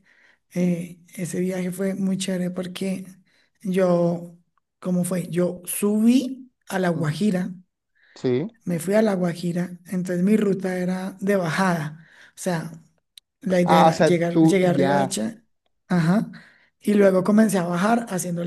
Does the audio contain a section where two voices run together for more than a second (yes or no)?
yes